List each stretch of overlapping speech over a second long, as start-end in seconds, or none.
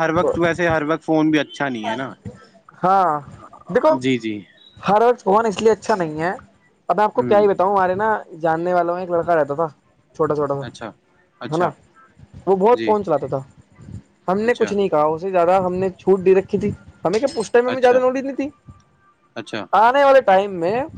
none